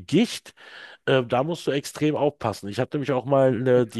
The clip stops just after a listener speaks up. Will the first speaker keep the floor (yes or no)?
yes